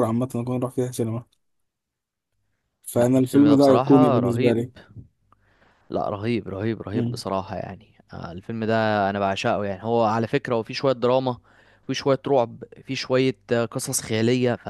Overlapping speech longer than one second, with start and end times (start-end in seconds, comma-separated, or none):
2.9-4.6